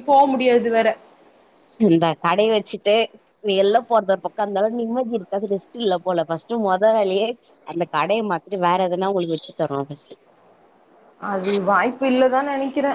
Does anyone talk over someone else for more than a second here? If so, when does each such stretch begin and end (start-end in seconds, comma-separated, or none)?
none